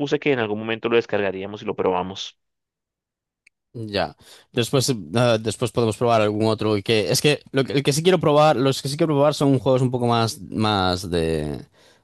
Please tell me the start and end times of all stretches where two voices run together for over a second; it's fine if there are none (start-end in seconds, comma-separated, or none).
none